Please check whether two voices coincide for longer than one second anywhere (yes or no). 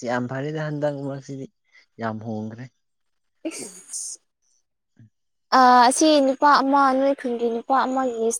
no